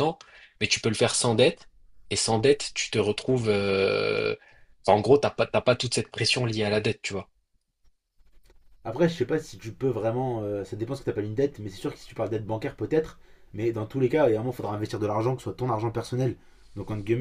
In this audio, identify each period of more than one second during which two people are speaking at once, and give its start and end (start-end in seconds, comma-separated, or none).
none